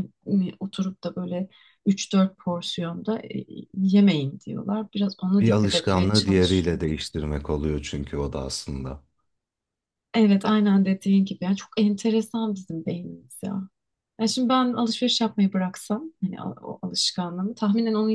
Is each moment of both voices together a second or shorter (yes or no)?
no